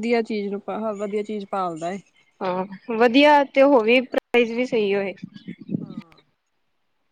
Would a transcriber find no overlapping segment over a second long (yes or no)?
yes